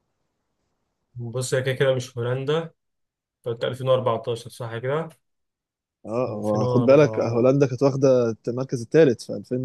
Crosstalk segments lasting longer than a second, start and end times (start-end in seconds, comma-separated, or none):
6.3-7.5